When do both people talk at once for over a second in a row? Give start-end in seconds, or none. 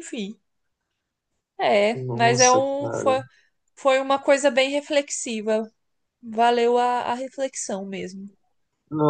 1.9-3.2